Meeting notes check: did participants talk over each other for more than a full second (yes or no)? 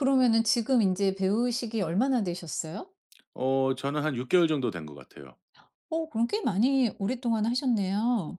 no